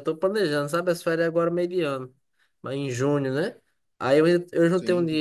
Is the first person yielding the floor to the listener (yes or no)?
no